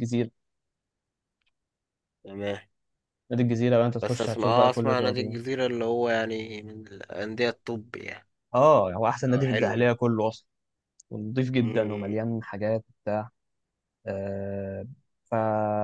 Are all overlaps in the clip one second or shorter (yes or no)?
no